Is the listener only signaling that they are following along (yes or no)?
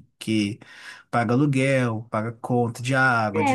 no